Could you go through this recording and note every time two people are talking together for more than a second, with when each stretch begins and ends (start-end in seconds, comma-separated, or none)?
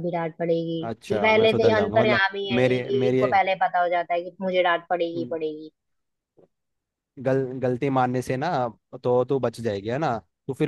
0.9-3.2